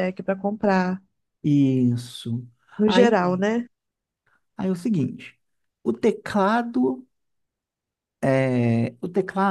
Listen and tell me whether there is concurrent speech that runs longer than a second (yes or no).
no